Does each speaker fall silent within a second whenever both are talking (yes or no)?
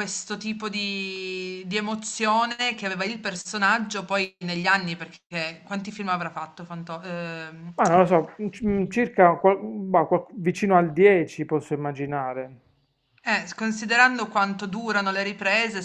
yes